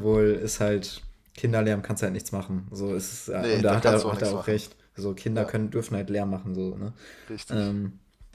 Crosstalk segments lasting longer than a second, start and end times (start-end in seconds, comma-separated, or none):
3.3-4.6